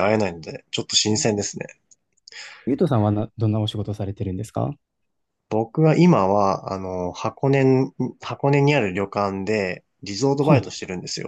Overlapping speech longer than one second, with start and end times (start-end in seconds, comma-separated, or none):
none